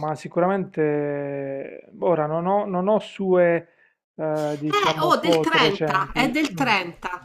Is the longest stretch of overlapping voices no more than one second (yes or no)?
no